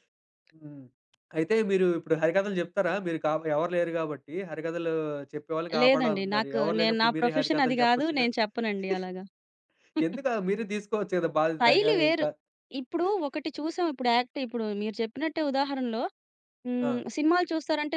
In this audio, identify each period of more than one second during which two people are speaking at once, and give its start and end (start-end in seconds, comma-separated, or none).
5.8-8.3